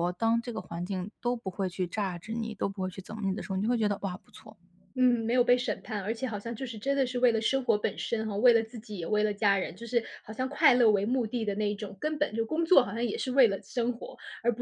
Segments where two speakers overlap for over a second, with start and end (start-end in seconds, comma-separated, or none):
none